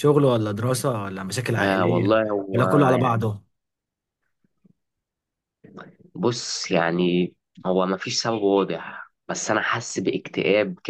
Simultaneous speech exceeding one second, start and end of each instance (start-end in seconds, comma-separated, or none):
1.6-3.3